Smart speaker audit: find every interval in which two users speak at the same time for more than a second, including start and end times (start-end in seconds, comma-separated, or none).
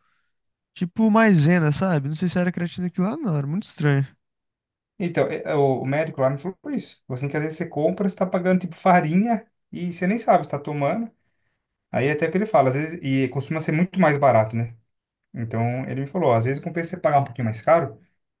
none